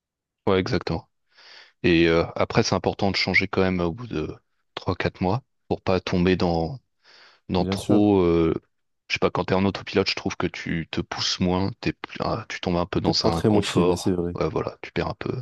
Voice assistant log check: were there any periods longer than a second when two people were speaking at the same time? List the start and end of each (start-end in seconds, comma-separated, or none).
13.0-14.4